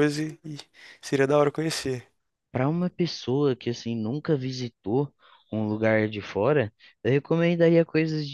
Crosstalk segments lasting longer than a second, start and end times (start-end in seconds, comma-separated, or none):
none